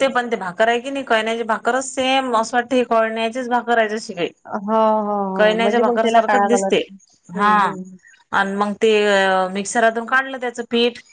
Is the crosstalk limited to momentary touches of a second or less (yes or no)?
no